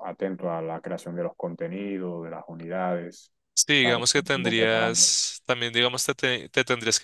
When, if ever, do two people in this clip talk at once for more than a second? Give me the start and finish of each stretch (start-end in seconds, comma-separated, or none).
3.8-5.1